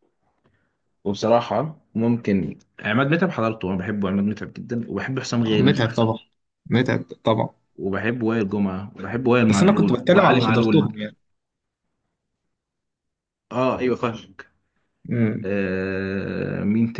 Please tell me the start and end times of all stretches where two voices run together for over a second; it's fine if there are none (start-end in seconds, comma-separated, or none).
9.5-10.9